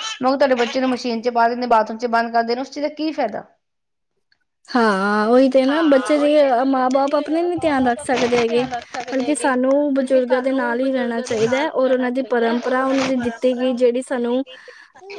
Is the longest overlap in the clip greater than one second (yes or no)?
no